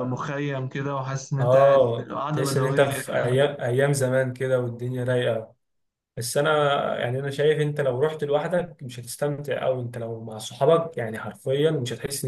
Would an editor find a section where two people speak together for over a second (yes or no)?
yes